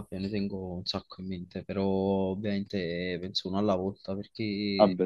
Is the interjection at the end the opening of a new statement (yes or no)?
no